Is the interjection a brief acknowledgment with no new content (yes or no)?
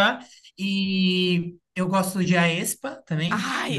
no